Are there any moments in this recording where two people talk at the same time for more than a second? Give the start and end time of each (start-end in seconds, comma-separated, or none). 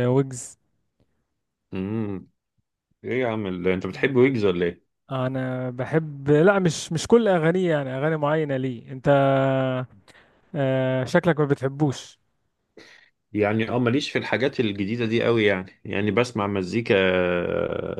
none